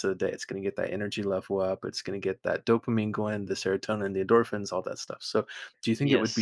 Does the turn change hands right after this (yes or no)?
no